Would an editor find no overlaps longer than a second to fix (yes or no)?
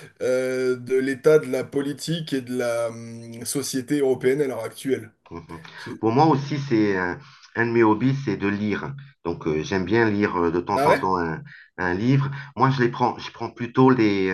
yes